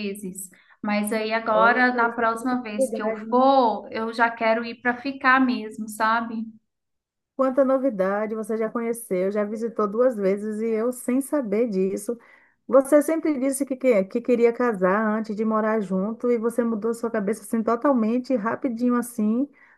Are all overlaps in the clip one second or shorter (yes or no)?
no